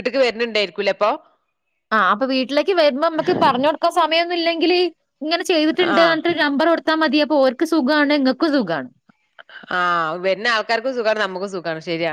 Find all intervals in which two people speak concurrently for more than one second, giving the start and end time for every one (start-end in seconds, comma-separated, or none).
none